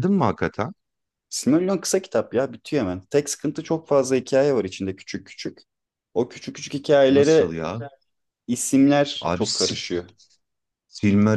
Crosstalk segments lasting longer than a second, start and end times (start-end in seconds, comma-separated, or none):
none